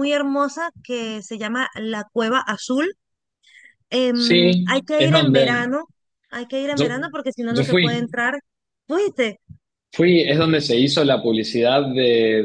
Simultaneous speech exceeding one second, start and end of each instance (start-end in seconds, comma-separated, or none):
4.1-5.7